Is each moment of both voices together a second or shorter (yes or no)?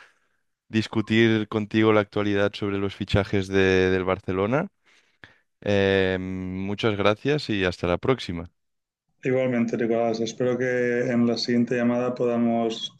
yes